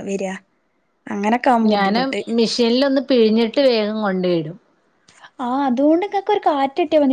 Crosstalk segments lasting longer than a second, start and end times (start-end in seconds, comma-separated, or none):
none